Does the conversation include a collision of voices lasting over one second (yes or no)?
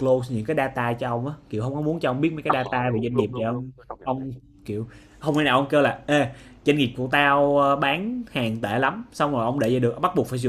yes